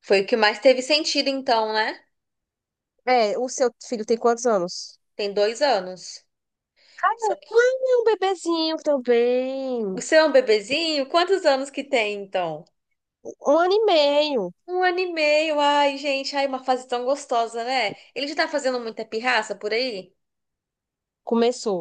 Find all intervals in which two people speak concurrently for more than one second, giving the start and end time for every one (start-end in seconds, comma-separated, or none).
none